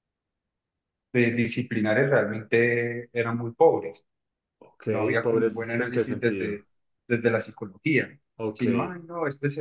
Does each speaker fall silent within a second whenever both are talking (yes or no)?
no